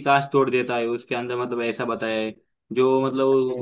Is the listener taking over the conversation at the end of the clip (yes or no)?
no